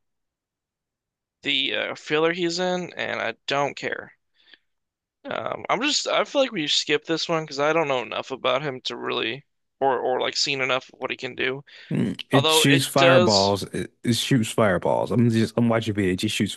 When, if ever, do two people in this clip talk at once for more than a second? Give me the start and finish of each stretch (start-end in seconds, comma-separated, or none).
12.3-13.6